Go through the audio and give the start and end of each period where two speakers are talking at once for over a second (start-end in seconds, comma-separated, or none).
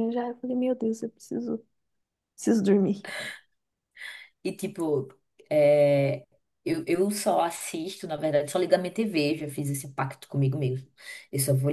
none